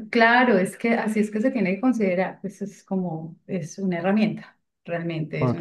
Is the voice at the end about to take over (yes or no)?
no